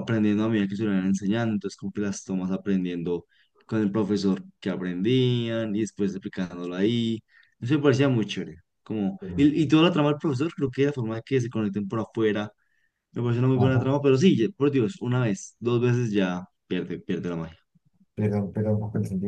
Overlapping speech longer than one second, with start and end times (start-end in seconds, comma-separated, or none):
none